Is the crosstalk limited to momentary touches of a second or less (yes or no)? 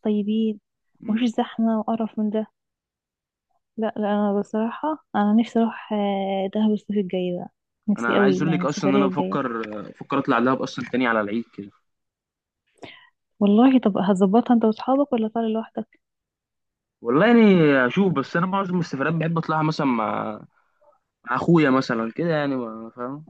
no